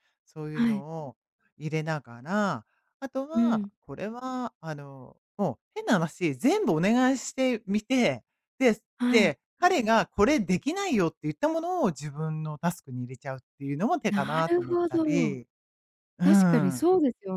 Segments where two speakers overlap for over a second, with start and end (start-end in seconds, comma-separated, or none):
14.1-15.4